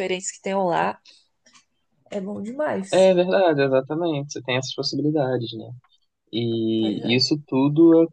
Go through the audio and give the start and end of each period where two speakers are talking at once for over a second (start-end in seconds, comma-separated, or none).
none